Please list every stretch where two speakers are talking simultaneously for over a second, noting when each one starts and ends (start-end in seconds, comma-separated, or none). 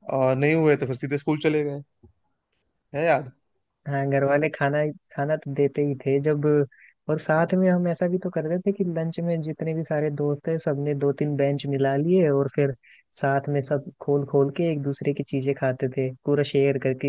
none